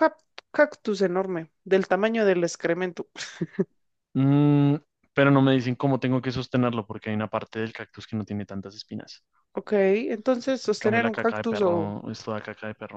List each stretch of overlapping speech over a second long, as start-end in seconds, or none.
10.7-11.9